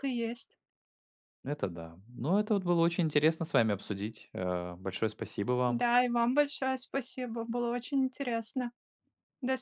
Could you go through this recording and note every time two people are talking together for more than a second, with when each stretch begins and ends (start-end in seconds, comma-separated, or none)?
none